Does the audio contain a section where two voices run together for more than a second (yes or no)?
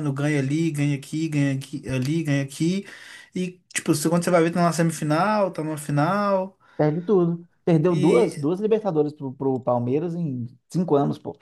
no